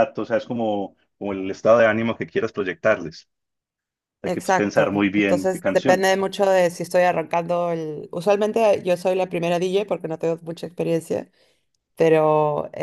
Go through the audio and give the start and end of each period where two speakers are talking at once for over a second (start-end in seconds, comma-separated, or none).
4.2-6.2